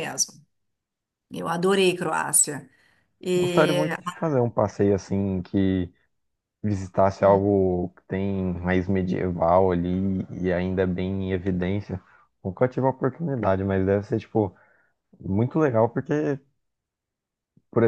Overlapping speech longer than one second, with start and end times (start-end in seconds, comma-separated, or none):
none